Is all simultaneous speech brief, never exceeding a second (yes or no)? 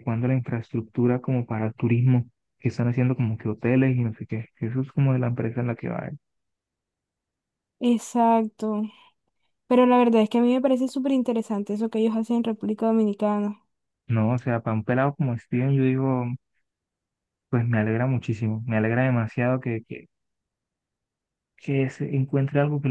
yes